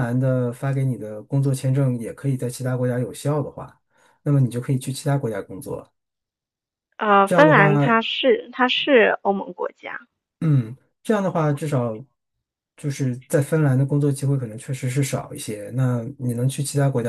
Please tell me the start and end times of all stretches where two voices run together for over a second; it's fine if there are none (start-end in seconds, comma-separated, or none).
none